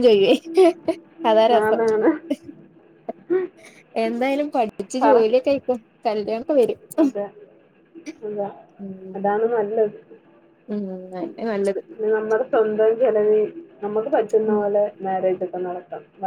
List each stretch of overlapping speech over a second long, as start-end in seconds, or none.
none